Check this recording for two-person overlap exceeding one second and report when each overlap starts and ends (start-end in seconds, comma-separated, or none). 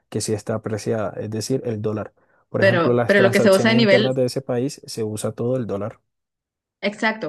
2.6-4.1